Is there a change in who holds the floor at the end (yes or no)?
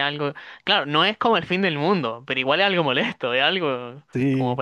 no